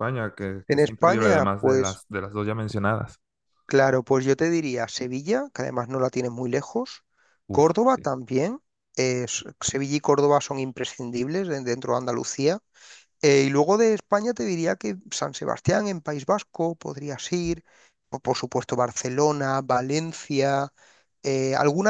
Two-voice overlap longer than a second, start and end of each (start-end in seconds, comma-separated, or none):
0.7-2.0